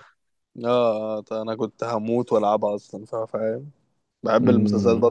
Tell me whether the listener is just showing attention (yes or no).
no